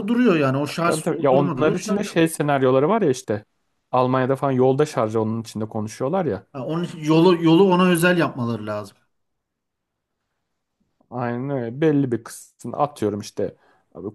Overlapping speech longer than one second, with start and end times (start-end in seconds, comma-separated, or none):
0.9-2.2